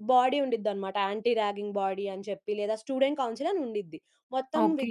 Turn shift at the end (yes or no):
no